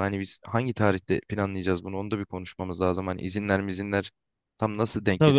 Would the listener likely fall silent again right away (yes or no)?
no